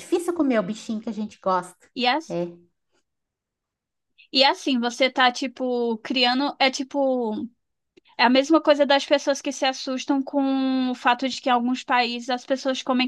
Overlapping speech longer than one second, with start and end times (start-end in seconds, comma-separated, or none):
none